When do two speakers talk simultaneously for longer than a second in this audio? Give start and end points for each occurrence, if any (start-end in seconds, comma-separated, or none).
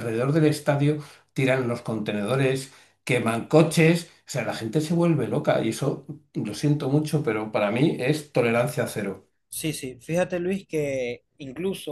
none